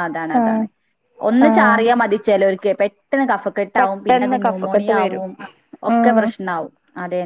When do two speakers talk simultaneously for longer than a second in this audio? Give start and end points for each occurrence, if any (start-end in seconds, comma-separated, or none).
3.8-5.2